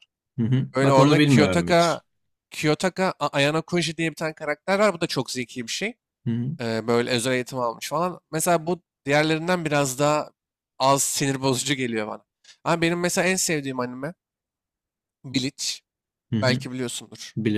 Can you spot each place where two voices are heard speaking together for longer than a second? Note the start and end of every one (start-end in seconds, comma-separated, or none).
0.7-2.0